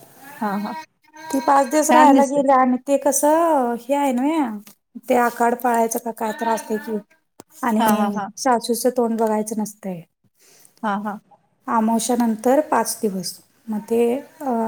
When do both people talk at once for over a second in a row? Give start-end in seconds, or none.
none